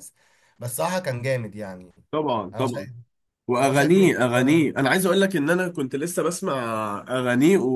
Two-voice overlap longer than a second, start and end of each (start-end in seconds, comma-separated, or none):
3.6-4.9